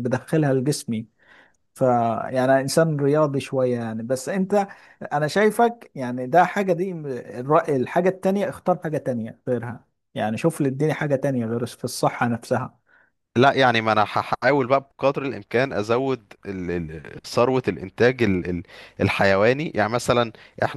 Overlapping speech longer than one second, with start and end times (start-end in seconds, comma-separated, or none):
none